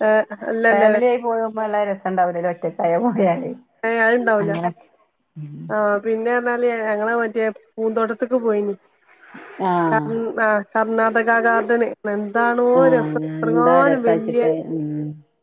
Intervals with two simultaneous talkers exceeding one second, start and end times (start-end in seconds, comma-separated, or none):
12.8-14.4